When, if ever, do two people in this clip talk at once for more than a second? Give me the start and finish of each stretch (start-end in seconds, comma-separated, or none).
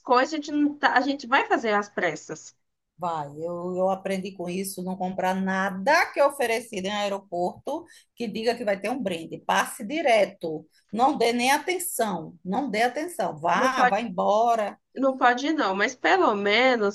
none